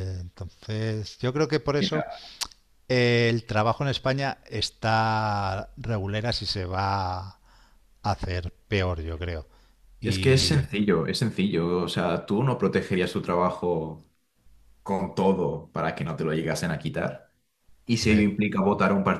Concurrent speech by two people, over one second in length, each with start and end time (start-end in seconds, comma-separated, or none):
none